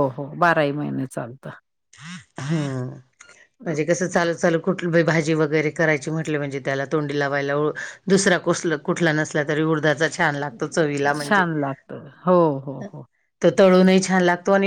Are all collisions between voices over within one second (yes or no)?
yes